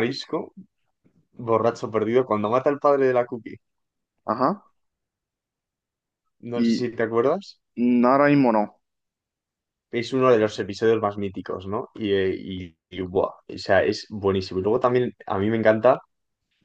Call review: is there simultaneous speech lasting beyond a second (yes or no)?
no